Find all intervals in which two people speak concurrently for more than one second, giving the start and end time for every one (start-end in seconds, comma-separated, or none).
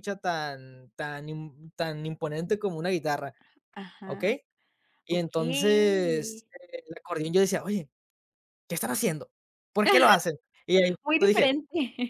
5.1-6.4